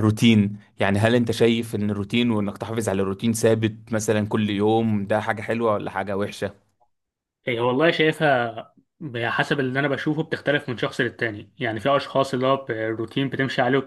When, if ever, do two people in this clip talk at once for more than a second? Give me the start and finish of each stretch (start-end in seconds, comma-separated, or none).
none